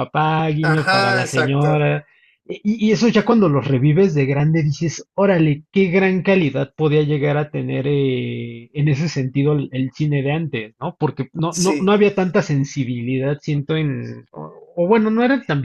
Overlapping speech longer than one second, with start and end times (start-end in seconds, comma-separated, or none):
0.6-1.9